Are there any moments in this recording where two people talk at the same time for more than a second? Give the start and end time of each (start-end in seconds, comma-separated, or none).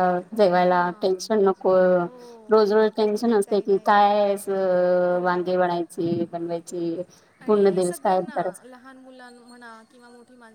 2.5-4.0